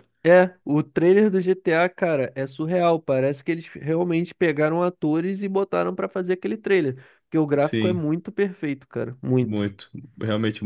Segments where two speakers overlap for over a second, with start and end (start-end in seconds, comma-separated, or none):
none